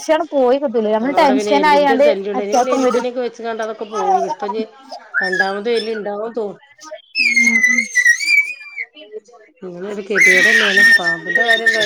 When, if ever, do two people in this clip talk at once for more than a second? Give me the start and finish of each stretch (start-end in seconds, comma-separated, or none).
1.0-3.0